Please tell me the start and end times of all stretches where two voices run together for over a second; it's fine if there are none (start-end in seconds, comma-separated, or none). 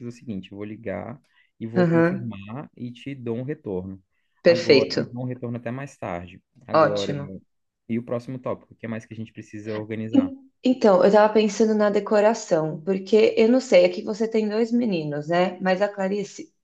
none